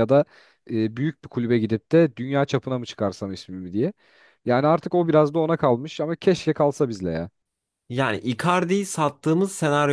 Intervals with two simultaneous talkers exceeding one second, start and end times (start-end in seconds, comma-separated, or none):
none